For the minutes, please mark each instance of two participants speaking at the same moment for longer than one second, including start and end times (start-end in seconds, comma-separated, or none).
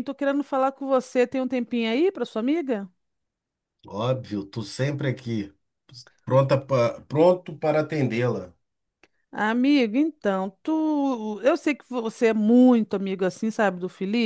none